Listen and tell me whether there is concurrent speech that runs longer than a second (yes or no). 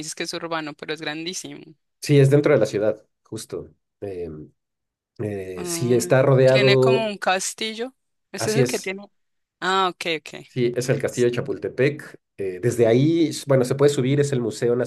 yes